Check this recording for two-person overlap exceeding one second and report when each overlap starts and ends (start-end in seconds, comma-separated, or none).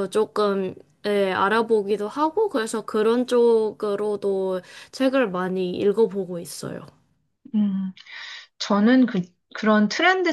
none